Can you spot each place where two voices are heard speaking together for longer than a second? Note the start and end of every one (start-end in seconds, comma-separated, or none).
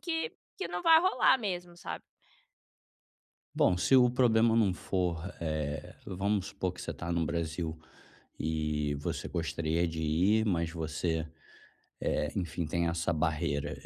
none